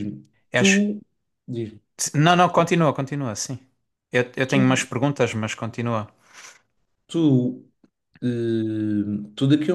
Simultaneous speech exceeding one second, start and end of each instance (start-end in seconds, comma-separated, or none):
none